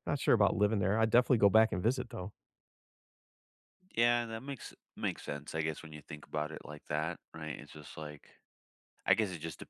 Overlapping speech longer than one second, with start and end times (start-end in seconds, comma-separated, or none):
none